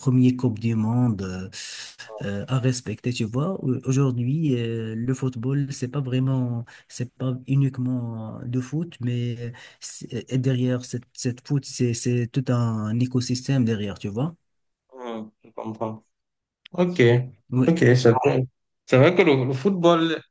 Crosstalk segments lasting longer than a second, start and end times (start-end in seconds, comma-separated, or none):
none